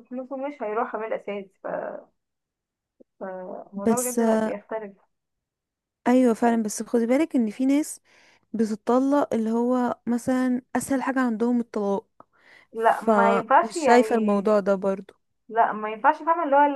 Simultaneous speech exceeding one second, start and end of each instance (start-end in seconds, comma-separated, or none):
12.8-14.5